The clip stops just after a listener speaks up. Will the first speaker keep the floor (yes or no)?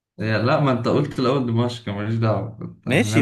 no